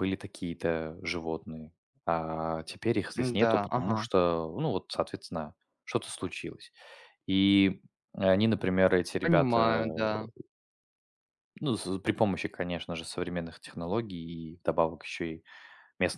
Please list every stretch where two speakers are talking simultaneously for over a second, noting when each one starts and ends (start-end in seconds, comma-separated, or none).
none